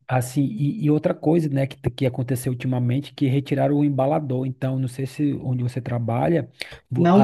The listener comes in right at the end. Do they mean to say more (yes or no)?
no